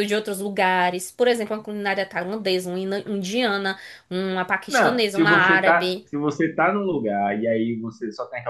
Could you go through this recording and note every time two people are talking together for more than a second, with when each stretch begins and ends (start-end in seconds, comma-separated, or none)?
4.7-6.1